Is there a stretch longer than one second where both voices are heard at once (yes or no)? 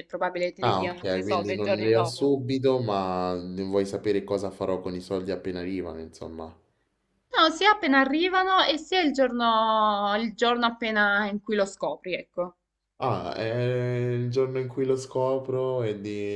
yes